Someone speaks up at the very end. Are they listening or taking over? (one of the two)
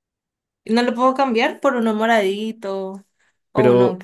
taking over